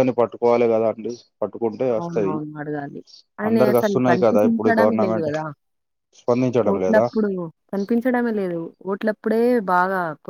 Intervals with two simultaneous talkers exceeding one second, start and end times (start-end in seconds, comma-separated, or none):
3.5-5.3